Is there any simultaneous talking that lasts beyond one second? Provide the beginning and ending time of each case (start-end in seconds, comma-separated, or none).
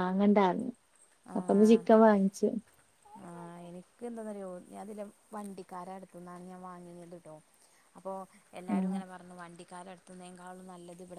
none